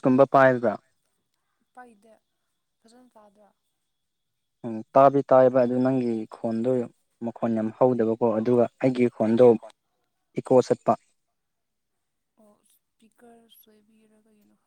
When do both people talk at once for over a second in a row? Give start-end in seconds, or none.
none